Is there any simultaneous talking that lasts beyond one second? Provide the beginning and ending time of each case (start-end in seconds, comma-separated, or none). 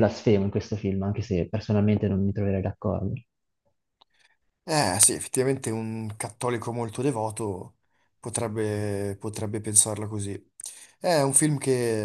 none